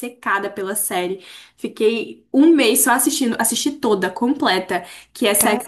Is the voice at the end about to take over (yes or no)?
no